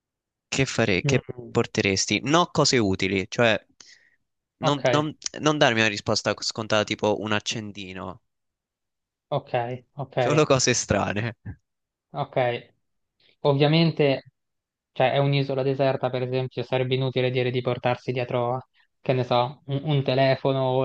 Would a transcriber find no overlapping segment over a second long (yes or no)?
yes